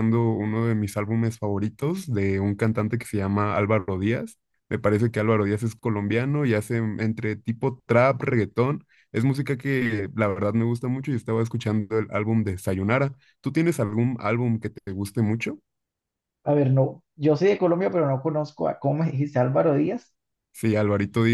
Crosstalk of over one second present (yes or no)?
no